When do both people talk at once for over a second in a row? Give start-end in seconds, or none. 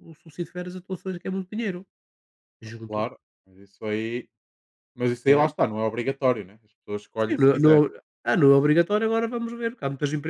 none